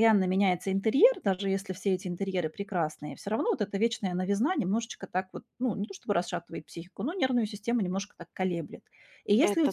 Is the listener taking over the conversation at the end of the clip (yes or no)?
no